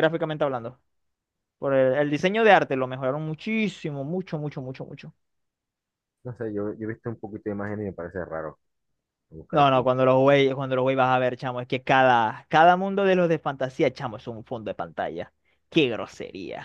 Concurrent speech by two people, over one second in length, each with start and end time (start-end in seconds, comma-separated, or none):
none